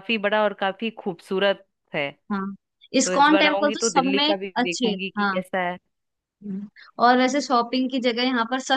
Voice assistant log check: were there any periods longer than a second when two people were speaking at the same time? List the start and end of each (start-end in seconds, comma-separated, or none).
3.0-5.4